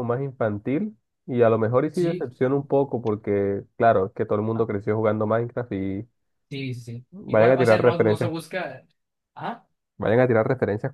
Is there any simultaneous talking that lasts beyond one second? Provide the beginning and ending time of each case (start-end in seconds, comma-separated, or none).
7.1-8.3